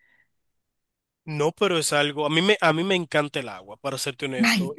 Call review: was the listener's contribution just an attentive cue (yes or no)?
yes